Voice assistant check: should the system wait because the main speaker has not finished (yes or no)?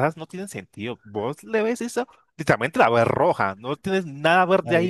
no